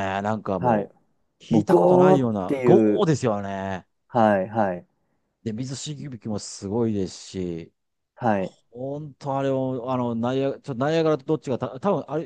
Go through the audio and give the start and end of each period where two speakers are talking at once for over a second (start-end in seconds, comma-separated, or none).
1.5-3.1